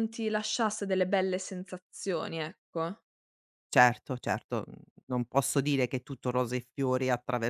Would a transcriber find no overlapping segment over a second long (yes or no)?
yes